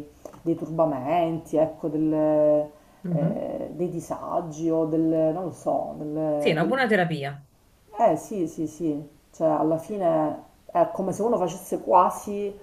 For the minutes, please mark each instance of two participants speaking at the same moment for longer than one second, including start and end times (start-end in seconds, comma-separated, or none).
none